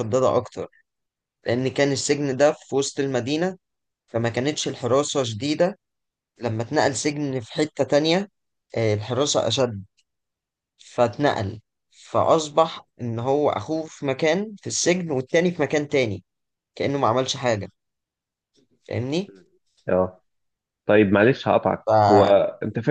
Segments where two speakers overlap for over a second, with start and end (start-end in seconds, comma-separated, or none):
none